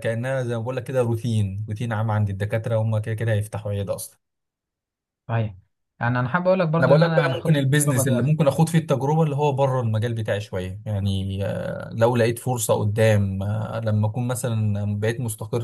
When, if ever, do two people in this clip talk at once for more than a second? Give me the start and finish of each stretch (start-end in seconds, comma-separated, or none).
6.8-8.3